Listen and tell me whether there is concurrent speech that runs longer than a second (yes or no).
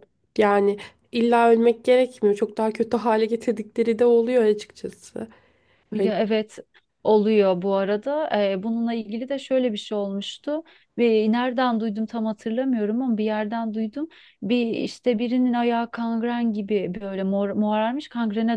no